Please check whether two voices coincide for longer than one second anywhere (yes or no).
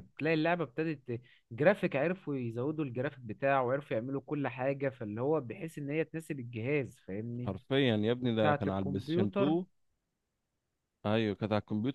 yes